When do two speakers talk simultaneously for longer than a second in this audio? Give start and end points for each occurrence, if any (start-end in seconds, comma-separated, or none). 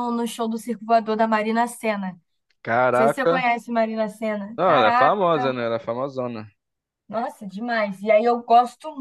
none